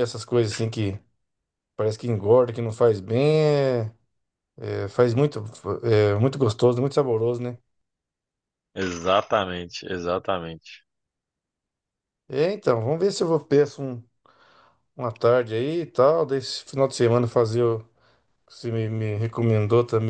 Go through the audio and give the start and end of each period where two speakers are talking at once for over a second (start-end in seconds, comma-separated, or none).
none